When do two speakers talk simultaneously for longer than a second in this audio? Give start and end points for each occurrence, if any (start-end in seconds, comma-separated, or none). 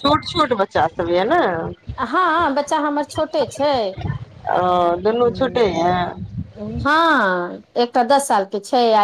none